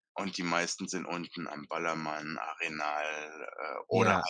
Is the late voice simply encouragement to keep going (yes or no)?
yes